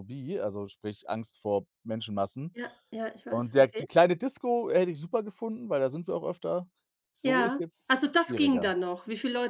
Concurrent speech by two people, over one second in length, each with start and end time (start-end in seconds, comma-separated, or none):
7.2-8.7